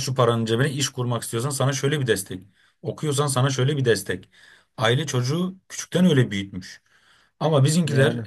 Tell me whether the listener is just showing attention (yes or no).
yes